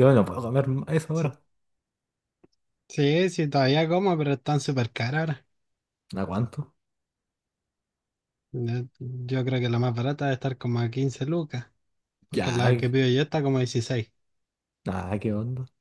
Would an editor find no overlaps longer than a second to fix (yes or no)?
yes